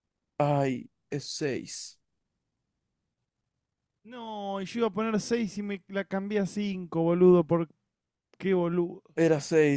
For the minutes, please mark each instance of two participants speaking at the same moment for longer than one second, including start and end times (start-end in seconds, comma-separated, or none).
none